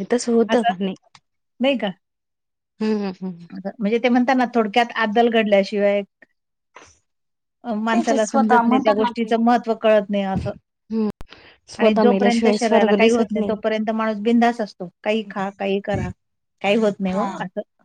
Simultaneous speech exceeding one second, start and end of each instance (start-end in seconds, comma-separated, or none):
7.9-9.3, 11.8-13.3